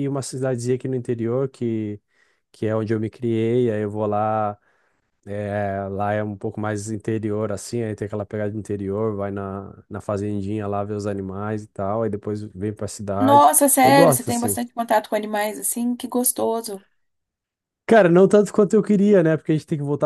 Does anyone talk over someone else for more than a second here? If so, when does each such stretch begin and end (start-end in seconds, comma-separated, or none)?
13.2-14.6